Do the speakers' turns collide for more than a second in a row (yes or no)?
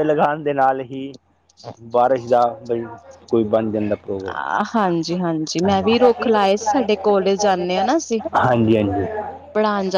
yes